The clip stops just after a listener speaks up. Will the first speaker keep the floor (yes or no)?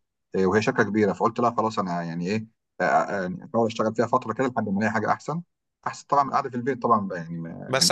no